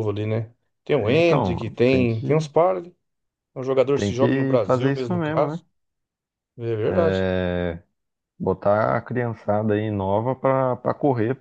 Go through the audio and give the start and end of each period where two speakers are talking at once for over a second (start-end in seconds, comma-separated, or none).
1.0-2.5, 3.9-5.6